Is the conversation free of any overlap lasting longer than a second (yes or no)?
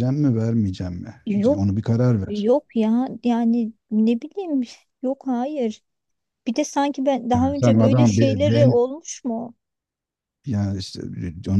no